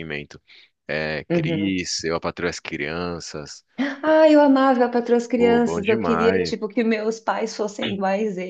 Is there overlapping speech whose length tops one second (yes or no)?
yes